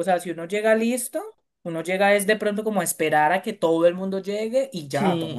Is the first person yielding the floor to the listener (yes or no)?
yes